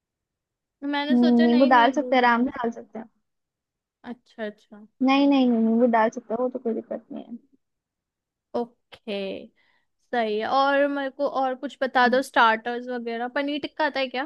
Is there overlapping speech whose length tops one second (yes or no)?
yes